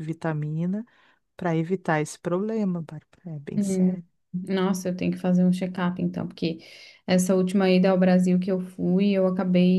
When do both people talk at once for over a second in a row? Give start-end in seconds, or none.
none